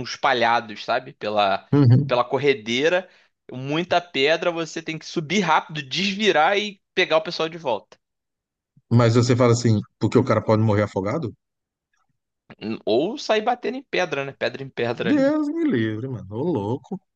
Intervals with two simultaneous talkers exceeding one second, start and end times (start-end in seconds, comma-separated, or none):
none